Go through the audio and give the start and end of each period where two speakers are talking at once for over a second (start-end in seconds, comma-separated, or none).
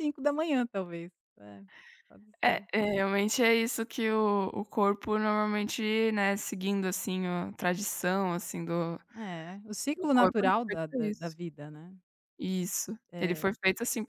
9.9-11.3